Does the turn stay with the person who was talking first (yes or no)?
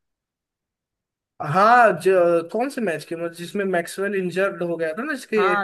no